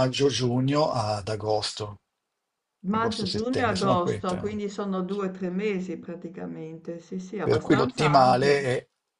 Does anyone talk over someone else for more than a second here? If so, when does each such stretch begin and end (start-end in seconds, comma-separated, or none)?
2.9-4.6, 7.4-8.6